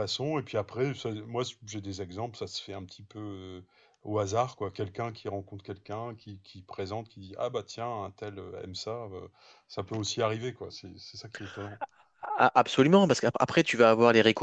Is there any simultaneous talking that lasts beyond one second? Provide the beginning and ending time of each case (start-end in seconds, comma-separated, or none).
none